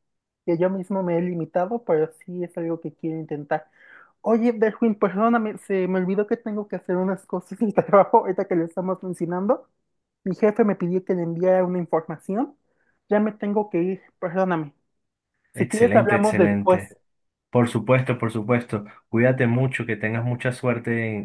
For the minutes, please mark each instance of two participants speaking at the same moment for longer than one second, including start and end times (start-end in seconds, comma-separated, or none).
15.6-16.9